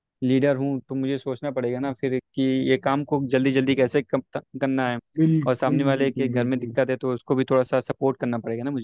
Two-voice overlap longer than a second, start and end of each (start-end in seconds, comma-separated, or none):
5.5-6.8